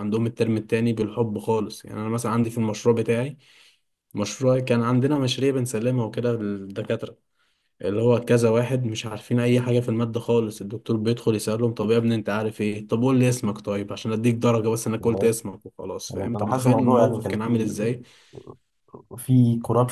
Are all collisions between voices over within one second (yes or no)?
no